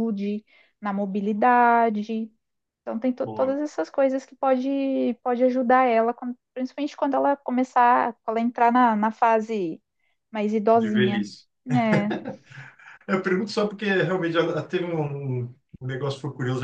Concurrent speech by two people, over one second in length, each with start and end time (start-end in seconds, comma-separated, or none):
none